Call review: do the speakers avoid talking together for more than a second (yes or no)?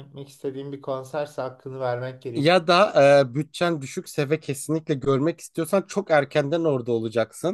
yes